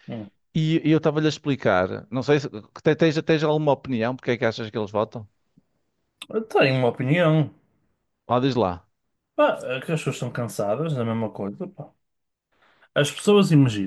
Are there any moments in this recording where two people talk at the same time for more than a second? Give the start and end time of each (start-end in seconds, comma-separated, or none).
none